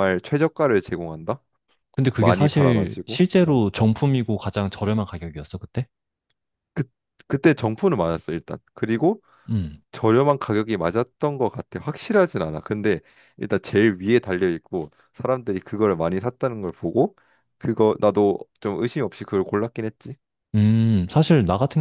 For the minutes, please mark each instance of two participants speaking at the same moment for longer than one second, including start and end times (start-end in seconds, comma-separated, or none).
2.1-3.6